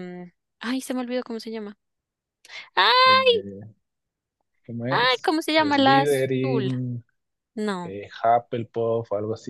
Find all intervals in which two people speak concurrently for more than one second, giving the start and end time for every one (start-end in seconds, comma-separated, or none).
4.9-6.7